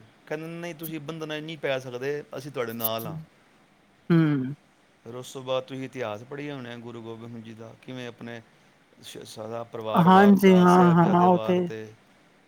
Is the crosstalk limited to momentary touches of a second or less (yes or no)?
no